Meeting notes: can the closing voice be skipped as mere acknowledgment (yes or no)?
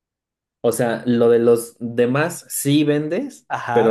no